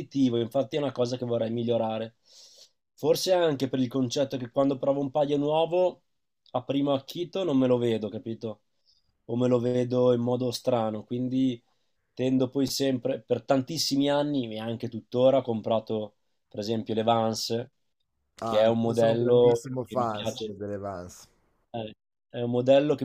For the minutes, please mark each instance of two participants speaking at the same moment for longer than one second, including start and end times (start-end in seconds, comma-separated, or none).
18.4-20.5